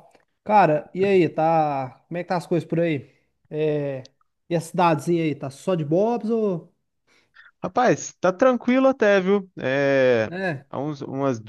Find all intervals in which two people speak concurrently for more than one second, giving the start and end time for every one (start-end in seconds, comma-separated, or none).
none